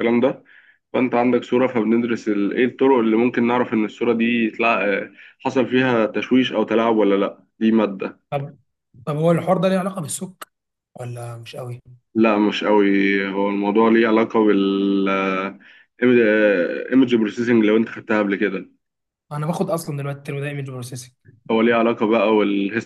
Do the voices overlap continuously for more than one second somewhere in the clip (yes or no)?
no